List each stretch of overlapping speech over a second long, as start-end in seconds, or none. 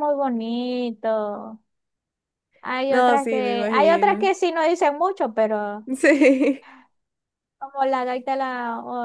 2.9-4.3